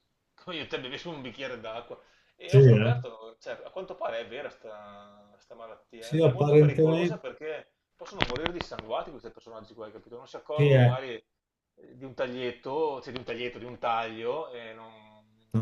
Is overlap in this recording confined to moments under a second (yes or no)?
no